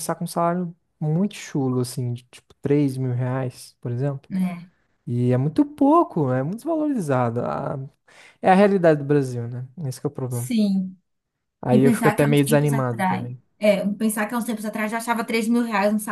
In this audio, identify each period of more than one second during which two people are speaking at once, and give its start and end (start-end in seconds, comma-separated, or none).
11.7-13.4